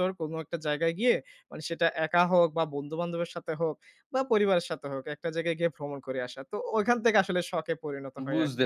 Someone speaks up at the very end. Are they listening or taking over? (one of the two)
taking over